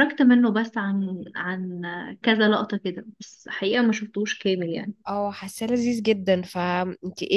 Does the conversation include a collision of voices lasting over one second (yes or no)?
no